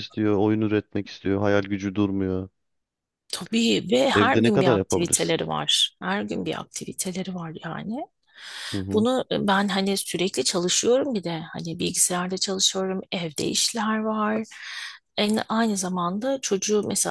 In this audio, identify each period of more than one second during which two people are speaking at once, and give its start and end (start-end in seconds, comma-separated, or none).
4.1-5.4